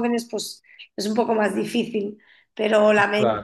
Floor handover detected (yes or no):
no